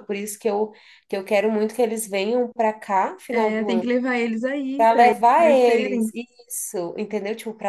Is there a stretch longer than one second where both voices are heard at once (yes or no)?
yes